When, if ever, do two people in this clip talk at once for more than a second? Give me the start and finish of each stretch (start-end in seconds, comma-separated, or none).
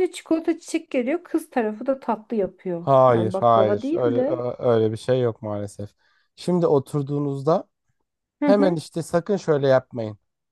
2.8-4.5